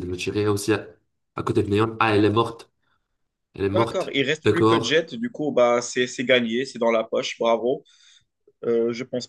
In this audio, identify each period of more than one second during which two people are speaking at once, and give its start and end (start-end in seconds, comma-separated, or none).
3.6-5.0